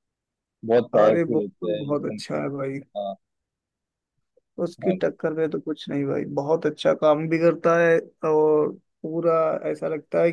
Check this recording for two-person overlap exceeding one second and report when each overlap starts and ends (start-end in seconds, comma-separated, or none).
0.9-2.2